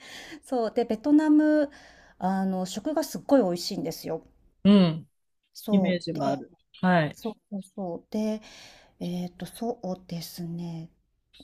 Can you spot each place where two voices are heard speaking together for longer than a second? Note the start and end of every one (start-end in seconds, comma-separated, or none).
none